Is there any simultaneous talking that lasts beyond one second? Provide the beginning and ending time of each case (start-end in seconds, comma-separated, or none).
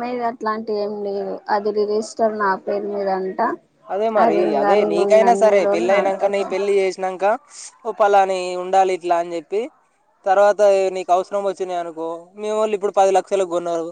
4.2-6.5